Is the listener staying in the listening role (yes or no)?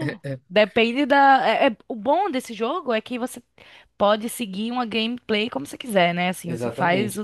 no